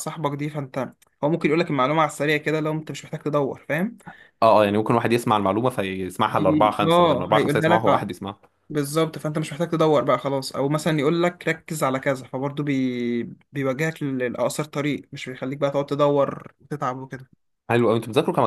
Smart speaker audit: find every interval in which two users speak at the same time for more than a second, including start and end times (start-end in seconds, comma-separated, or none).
6.4-8.1